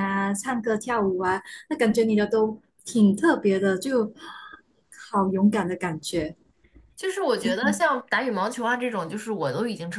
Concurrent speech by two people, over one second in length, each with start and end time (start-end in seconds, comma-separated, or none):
none